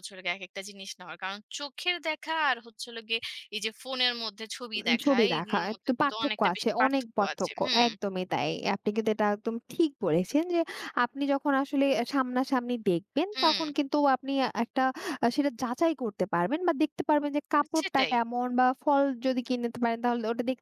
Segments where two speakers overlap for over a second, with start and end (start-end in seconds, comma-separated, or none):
4.9-7.8